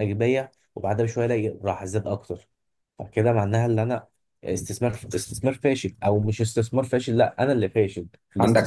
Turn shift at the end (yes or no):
yes